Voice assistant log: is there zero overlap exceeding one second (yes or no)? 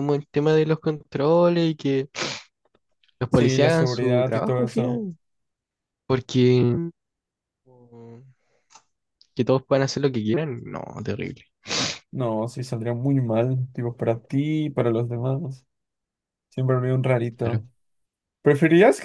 no